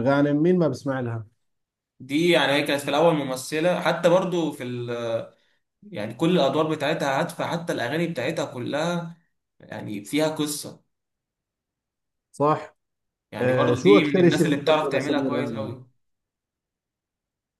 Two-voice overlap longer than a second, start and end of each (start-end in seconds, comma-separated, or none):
13.4-15.7